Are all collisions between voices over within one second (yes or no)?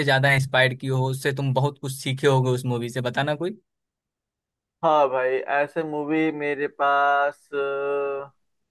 yes